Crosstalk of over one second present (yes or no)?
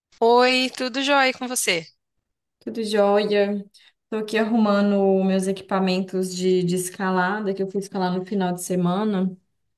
no